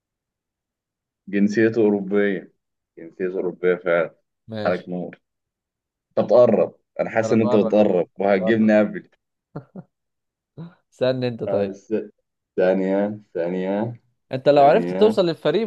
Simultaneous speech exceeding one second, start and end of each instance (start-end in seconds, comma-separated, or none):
7.2-8.7